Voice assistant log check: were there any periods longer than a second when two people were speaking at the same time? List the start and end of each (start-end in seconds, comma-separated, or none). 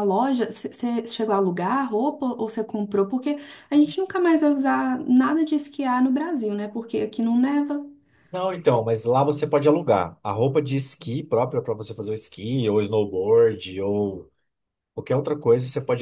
none